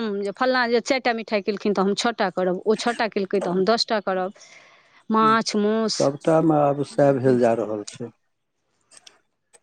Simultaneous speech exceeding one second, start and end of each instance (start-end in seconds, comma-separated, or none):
none